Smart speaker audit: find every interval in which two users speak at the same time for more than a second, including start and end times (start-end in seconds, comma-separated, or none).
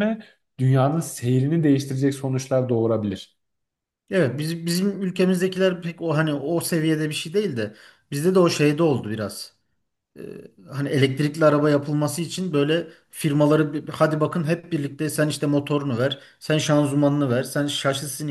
none